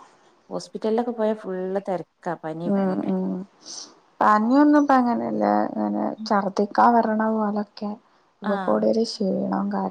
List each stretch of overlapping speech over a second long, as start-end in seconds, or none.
none